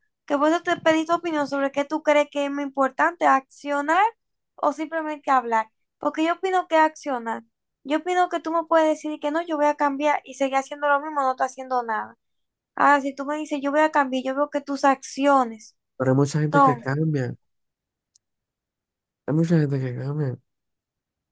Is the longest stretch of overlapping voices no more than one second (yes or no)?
yes